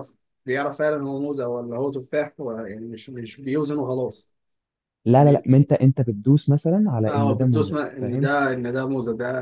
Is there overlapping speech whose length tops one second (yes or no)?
yes